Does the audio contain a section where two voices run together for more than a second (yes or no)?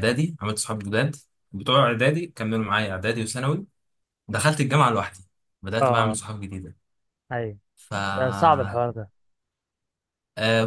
no